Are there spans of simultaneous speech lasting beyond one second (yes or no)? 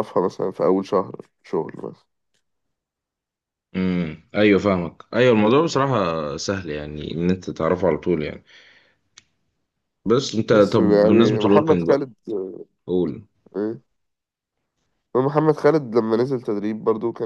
yes